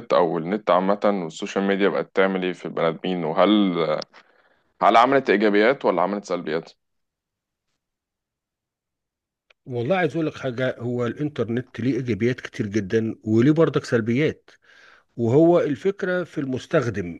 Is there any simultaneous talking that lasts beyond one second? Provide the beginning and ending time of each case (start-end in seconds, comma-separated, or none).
none